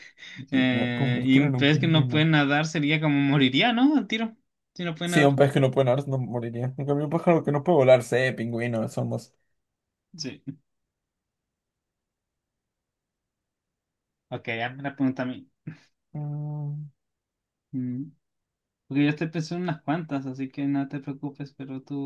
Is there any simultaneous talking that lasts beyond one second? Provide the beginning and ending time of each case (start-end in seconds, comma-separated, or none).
0.5-2.2